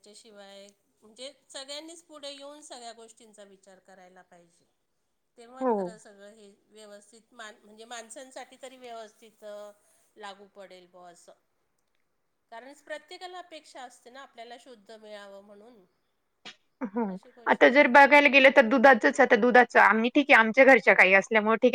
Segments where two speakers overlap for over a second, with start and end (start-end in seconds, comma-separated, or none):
none